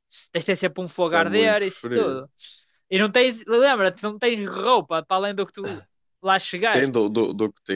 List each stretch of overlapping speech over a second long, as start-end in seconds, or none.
0.9-2.3